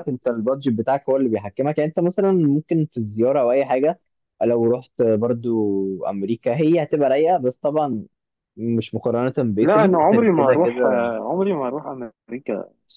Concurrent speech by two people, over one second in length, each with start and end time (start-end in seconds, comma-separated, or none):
9.6-10.8